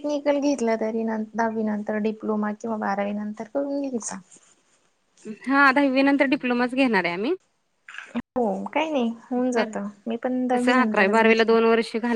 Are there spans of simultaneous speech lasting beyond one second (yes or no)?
yes